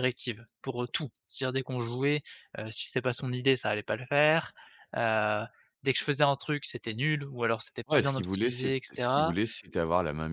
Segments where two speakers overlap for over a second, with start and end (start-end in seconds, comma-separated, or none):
7.9-9.3